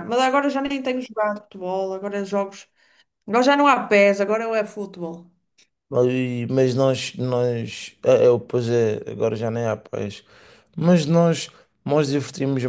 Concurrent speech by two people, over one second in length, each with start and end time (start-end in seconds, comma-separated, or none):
none